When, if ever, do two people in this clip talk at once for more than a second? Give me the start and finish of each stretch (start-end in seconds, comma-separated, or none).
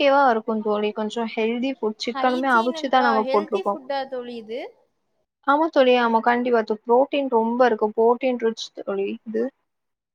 2.1-3.7